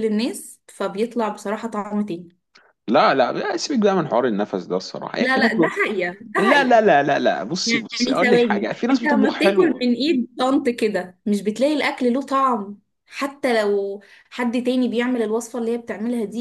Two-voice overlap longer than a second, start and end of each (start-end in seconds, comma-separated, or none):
7.7-9.9